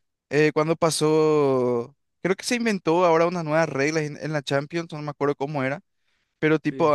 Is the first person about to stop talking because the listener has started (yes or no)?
no